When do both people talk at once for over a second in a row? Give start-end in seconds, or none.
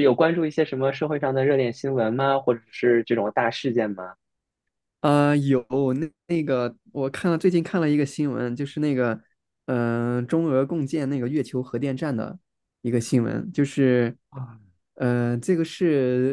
none